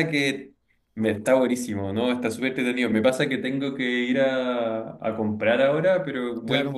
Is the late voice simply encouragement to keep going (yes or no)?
yes